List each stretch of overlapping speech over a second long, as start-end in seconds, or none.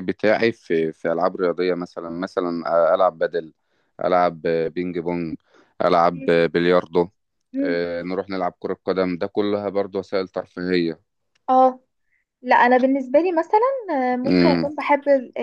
none